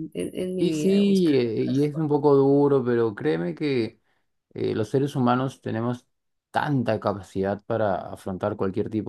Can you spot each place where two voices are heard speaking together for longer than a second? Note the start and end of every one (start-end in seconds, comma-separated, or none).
0.6-2.1